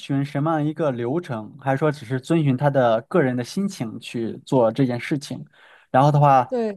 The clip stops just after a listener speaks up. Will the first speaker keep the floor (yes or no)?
yes